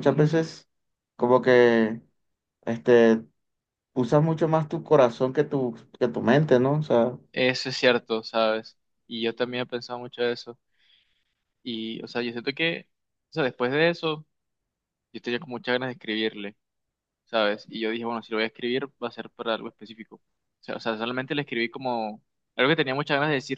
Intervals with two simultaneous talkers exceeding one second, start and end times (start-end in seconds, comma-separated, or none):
none